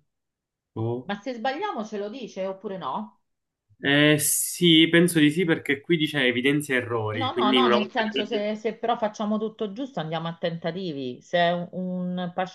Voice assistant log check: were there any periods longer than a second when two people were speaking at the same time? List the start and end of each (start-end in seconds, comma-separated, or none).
7.1-8.4